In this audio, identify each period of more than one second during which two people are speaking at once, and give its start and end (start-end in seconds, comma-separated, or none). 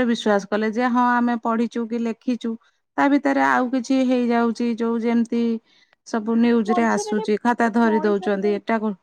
6.7-8.5